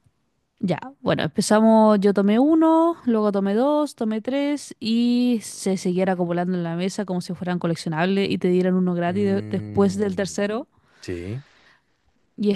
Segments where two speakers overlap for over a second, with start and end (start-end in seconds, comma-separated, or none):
9.1-10.4